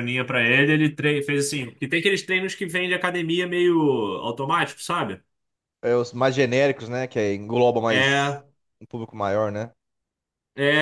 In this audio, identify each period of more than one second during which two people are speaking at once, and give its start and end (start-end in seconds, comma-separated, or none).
none